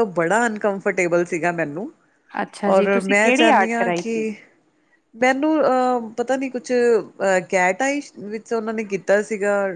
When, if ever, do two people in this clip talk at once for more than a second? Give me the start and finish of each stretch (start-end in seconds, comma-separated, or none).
2.7-4.2